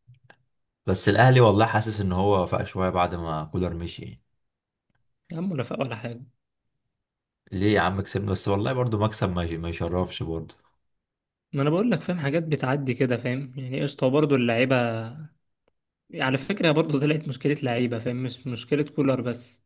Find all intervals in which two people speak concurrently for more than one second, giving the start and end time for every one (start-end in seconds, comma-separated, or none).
none